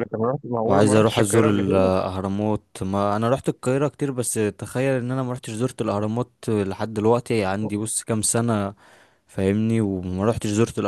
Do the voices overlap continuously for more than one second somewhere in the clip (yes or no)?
yes